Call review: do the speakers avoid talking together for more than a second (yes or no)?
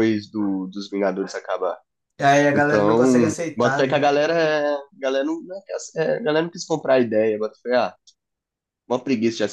no